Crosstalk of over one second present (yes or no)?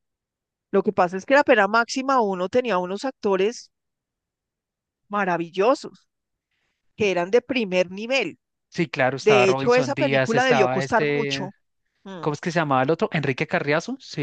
yes